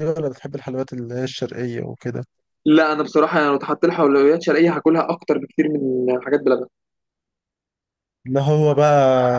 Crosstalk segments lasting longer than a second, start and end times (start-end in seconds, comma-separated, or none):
none